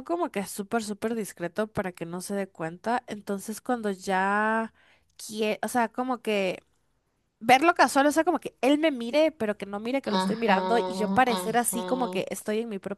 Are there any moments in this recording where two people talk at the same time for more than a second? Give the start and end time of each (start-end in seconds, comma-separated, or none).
10.0-12.2